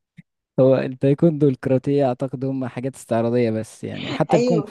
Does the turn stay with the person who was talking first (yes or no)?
yes